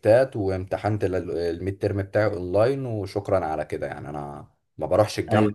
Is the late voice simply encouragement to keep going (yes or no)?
no